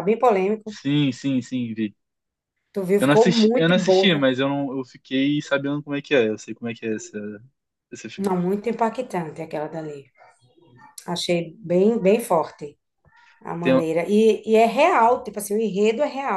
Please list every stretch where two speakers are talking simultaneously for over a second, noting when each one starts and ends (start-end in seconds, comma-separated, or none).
3.0-4.3